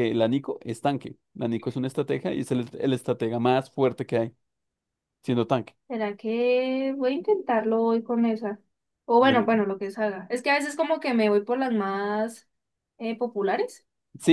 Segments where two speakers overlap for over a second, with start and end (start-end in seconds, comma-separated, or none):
none